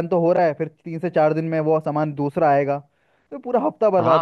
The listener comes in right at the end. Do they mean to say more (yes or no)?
yes